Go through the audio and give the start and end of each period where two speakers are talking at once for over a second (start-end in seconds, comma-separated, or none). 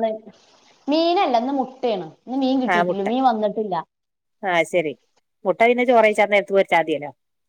none